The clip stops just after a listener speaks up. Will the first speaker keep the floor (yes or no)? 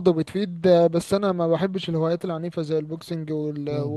yes